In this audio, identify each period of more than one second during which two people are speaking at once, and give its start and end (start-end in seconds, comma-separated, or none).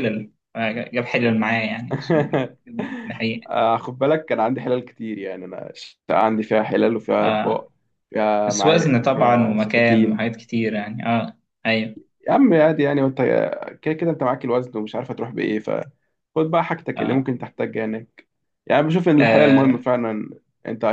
8.4-10.3